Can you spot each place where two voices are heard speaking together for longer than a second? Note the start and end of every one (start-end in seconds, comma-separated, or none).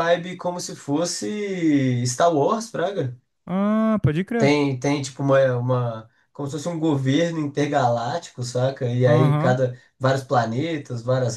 none